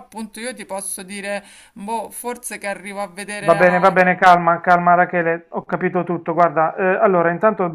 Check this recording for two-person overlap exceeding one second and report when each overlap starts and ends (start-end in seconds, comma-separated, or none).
none